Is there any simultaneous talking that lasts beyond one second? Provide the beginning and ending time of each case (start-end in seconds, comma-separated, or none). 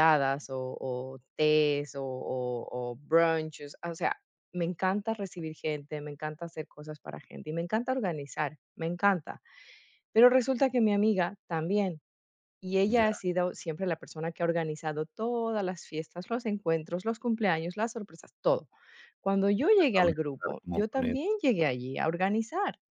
19.6-21.3